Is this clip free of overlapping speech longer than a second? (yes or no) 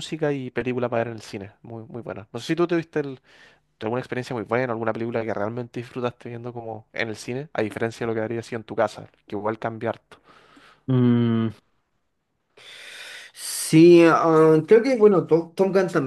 yes